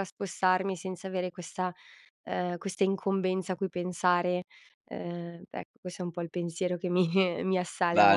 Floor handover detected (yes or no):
yes